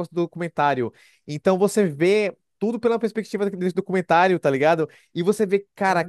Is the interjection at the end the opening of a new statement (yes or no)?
no